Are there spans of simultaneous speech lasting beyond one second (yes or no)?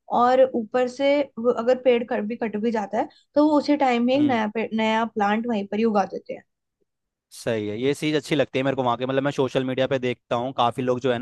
no